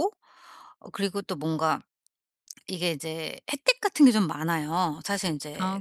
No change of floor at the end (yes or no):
yes